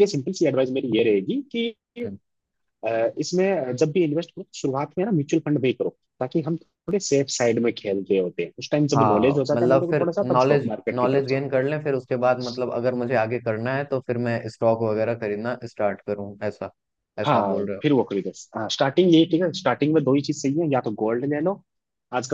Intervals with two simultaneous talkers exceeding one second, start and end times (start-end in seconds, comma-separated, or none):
8.9-11.4